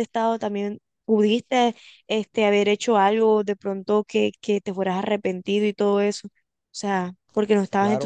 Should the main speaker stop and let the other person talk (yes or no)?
yes